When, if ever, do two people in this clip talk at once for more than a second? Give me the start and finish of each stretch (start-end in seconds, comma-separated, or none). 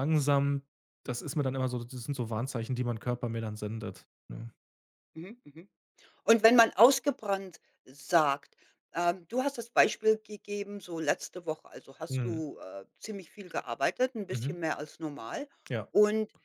none